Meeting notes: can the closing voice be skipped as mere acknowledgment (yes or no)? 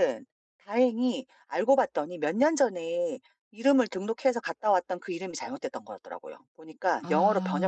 yes